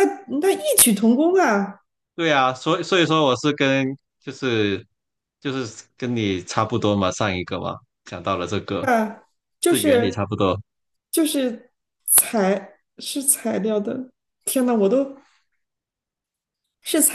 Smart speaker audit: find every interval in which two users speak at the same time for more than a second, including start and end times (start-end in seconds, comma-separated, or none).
none